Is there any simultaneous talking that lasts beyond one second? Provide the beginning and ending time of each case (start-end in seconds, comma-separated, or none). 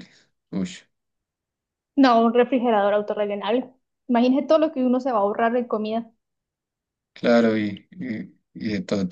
none